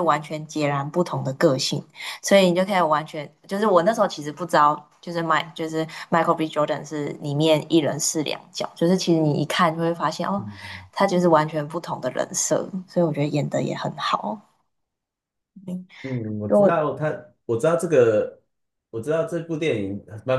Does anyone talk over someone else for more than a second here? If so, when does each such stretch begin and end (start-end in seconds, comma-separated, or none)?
none